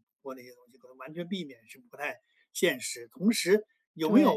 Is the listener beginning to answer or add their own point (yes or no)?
no